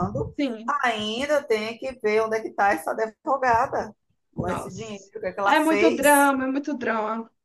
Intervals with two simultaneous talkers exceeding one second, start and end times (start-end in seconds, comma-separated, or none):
4.3-6.3